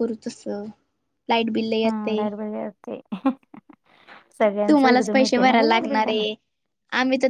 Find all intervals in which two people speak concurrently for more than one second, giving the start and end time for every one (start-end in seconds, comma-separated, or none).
4.7-6.2